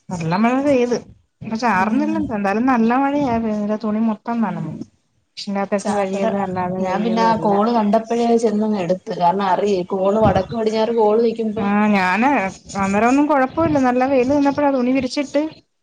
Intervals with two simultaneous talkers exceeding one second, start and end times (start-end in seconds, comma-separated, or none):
none